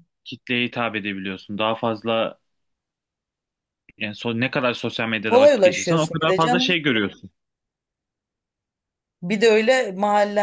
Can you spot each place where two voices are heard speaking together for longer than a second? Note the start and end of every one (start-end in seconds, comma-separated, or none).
5.2-6.8